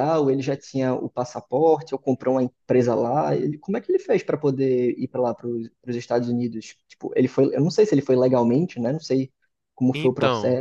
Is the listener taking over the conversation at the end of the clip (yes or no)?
yes